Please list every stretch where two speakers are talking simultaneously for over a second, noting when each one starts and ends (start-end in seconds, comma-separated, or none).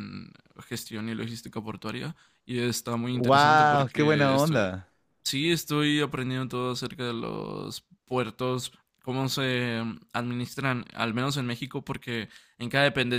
3.1-4.7